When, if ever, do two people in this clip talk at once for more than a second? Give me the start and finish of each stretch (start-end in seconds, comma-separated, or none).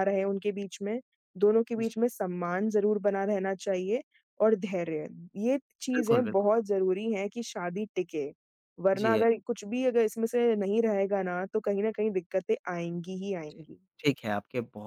none